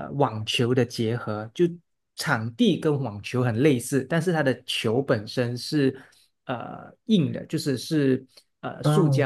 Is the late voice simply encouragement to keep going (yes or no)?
yes